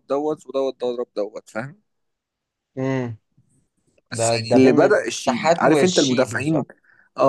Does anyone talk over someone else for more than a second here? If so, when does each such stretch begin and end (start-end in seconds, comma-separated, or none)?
4.2-6.6